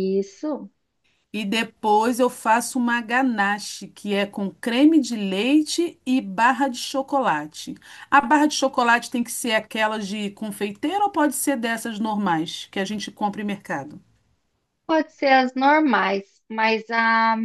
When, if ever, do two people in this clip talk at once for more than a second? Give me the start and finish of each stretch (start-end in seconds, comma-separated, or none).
none